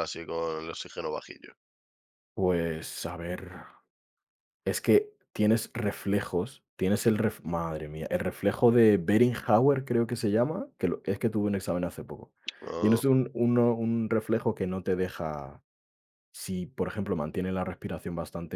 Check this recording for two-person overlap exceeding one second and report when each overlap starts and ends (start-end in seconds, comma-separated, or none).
none